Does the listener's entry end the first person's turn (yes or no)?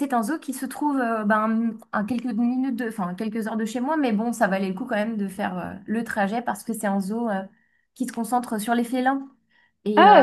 yes